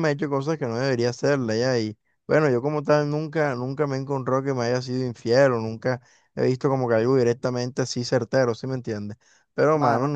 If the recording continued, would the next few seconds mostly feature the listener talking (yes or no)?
no